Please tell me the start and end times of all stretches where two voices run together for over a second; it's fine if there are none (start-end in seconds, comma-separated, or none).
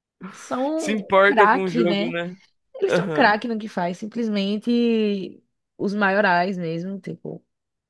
0.8-2.1